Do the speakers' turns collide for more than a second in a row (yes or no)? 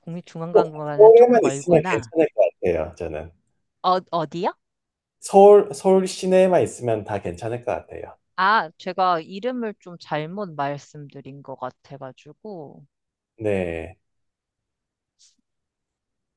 yes